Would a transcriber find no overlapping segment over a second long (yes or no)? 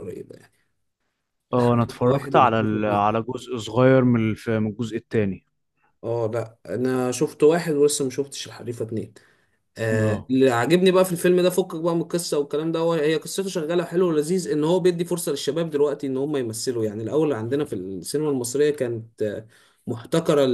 no